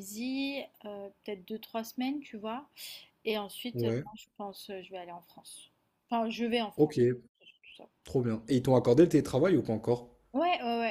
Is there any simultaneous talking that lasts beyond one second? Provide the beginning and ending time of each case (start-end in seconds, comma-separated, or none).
none